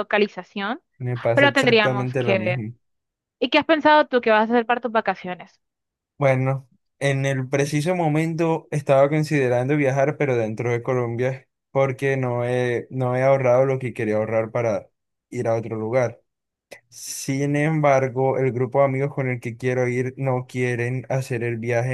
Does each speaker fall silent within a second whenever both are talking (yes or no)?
no